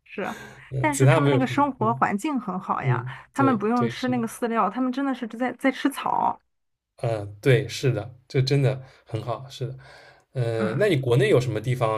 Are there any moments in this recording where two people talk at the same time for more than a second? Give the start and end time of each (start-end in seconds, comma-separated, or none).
0.8-2.0, 2.8-4.2